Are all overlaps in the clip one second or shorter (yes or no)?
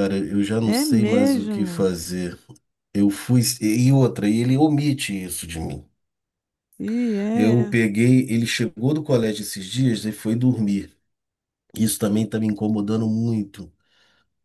no